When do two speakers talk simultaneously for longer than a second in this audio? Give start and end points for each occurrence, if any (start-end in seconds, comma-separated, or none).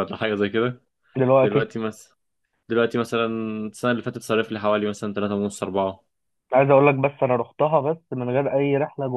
none